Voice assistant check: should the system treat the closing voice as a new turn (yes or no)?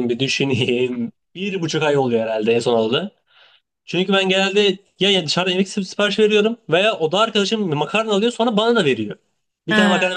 no